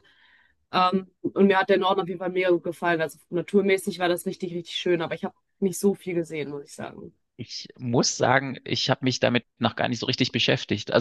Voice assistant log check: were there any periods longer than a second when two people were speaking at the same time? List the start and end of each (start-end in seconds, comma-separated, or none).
none